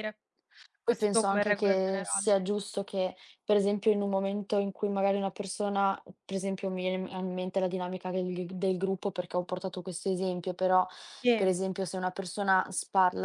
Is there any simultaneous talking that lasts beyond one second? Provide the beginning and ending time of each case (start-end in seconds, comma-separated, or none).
0.8-2.3